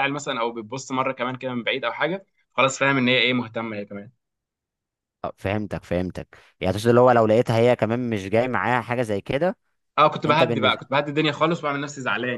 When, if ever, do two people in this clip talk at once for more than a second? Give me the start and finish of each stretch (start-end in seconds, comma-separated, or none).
none